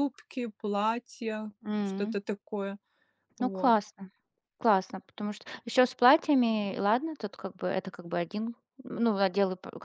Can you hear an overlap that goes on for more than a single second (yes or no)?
no